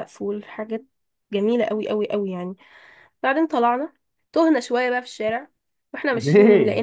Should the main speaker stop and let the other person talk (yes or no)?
no